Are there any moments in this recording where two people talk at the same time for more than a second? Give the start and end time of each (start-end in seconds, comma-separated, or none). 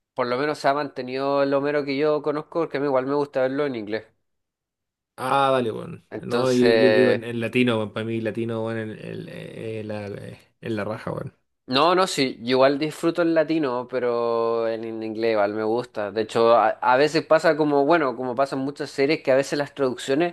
6.1-7.3